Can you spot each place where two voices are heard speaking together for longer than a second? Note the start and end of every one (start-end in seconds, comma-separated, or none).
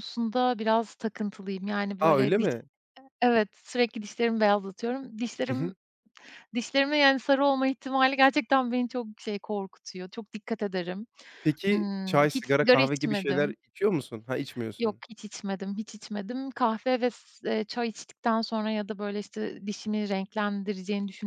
11.7-13.6